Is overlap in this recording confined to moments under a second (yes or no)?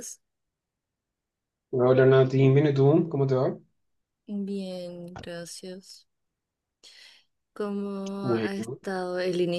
yes